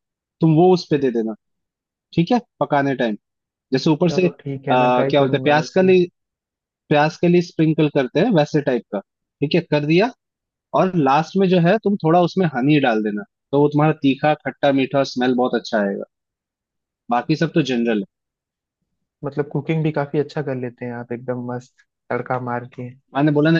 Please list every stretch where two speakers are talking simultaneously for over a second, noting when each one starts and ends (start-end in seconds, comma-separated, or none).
4.1-5.9